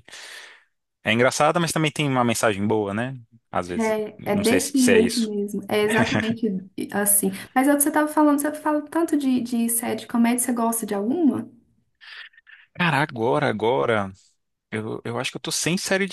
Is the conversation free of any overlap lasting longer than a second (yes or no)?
no